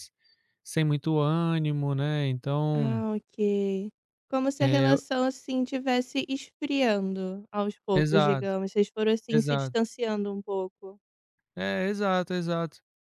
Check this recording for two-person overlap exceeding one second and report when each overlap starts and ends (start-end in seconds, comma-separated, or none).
none